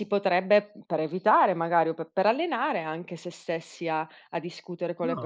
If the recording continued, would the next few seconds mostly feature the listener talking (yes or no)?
yes